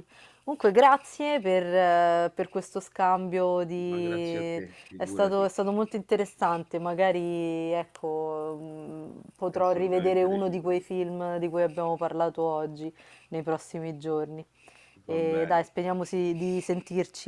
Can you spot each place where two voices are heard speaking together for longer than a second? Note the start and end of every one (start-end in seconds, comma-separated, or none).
3.9-5.5, 9.5-10.8